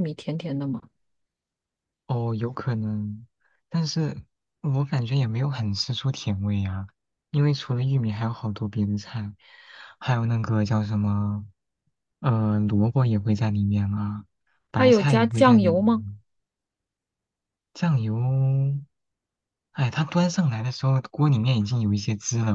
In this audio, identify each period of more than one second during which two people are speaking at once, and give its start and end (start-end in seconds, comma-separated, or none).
14.8-16.1